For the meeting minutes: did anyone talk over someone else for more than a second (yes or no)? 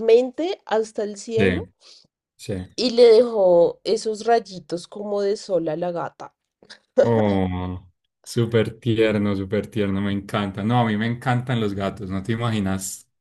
no